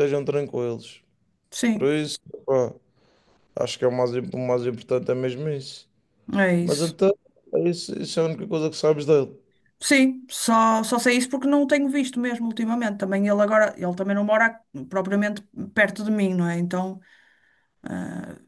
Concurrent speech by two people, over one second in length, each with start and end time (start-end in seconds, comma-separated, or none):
none